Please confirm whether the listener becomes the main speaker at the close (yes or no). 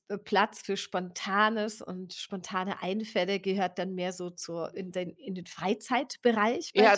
yes